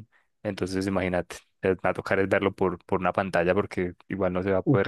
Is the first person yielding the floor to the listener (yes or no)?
yes